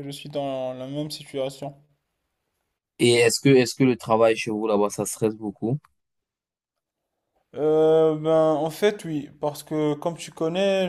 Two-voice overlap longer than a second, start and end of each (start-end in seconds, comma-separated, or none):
none